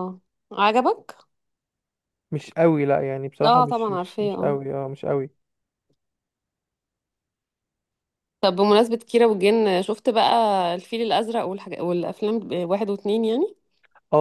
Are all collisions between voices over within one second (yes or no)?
no